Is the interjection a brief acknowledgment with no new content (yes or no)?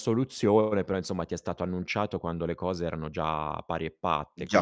no